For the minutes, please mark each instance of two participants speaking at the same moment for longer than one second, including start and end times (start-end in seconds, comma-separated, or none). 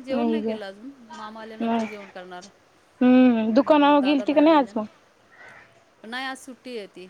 3.5-4.8